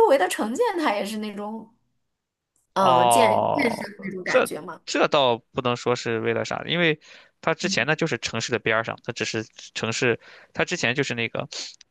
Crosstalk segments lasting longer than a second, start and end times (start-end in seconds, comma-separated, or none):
2.7-4.5